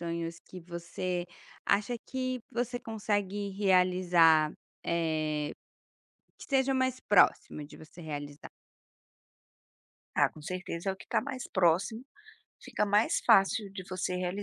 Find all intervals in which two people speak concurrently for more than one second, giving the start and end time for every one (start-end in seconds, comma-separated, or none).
none